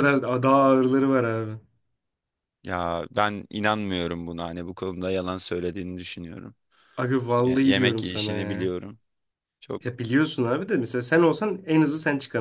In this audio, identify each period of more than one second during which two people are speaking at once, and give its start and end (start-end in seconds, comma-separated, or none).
7.4-8.7